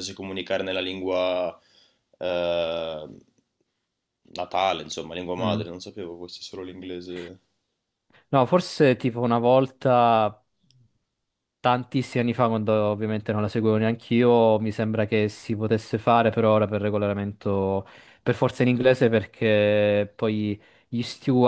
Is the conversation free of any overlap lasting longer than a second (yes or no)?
yes